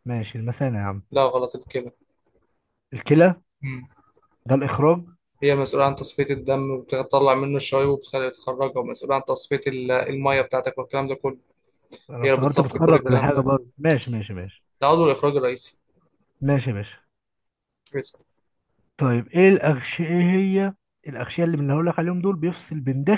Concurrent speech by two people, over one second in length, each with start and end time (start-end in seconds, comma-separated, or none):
12.2-13.4